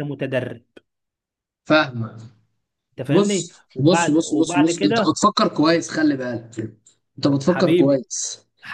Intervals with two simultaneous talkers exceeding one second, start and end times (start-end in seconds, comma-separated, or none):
3.1-5.2